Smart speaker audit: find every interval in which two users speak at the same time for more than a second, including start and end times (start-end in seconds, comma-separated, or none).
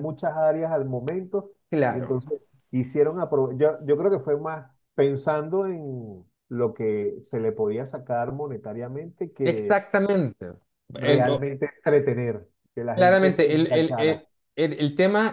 12.9-14.2